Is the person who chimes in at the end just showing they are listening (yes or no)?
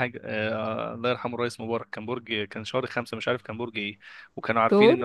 yes